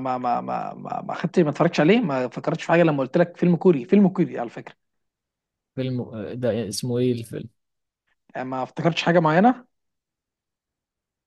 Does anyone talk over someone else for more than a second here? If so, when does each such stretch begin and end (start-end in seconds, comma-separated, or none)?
none